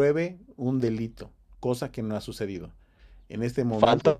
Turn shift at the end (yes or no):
yes